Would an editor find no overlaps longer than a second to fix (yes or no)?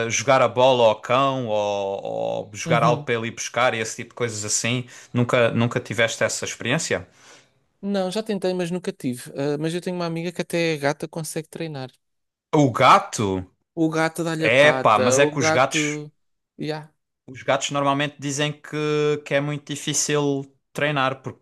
no